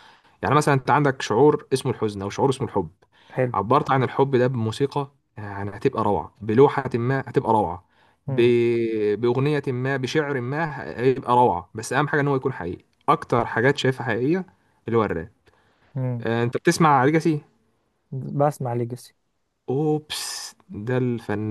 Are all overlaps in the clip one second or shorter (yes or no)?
yes